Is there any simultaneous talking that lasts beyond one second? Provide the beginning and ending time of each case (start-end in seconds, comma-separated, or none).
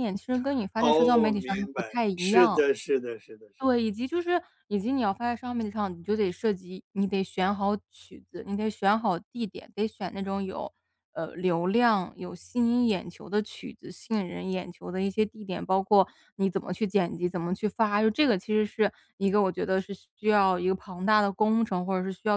0.8-2.6